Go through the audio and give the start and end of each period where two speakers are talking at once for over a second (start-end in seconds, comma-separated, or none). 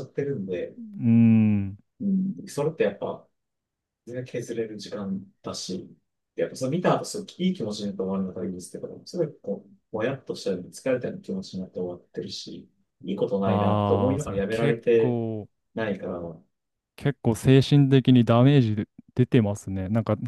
13.4-15.2